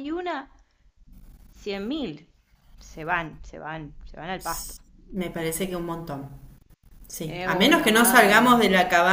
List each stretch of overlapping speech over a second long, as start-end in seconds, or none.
7.2-8.6